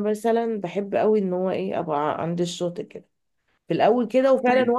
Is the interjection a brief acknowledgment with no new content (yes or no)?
yes